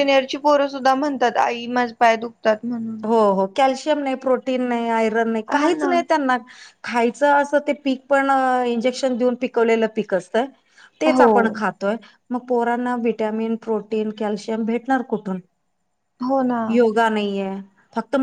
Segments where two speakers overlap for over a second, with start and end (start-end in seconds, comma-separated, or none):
none